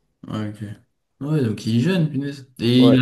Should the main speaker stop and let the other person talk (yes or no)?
yes